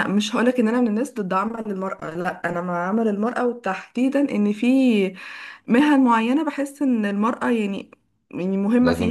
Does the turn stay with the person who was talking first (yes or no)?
yes